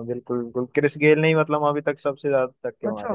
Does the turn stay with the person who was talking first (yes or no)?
no